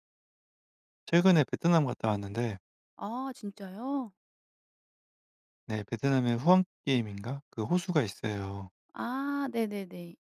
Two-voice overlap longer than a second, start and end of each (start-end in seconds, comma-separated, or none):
none